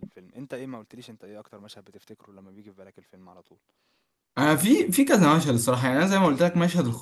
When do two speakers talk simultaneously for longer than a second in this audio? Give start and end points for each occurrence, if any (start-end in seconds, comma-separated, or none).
none